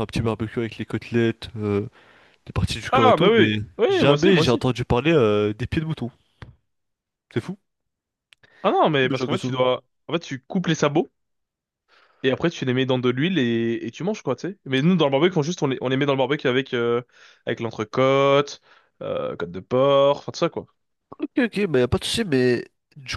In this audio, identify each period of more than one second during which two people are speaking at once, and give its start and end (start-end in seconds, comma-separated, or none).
2.9-4.6